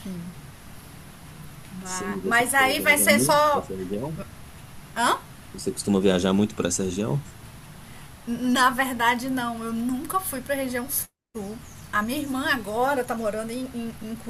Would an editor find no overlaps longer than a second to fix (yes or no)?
no